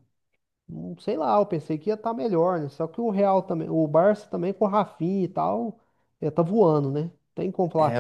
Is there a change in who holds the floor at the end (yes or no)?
yes